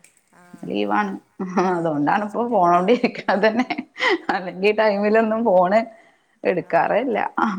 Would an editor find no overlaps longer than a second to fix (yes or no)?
no